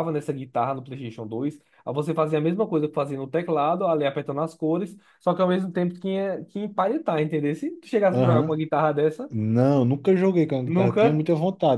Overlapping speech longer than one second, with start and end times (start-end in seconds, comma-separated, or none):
none